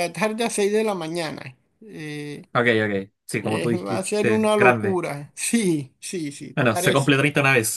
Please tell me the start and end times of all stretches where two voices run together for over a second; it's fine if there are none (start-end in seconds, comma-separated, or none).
3.4-5.0